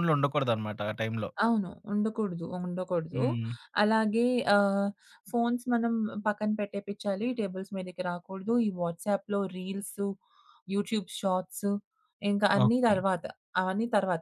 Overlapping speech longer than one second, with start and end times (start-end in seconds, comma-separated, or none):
none